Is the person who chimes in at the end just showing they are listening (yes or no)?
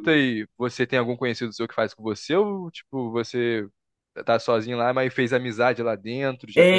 no